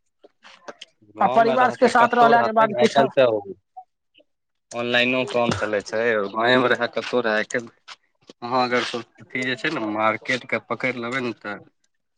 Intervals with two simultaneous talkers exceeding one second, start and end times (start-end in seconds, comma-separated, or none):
1.2-3.0